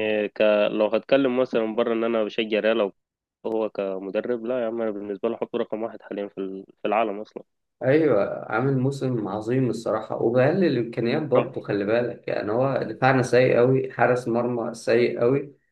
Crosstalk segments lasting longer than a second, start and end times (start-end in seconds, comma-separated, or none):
none